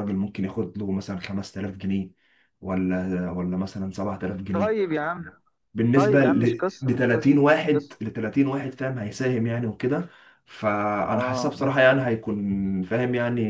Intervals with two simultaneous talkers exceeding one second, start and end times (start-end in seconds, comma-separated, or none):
6.0-8.0